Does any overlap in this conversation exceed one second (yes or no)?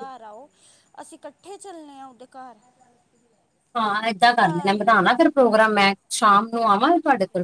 no